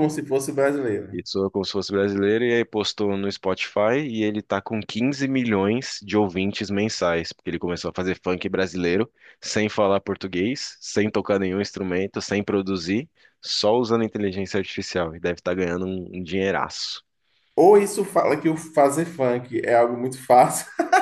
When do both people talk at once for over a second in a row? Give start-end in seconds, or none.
none